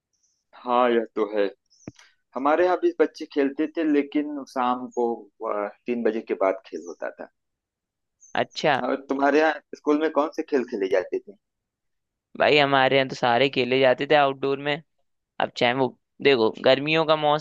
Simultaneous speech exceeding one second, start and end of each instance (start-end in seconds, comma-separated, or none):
none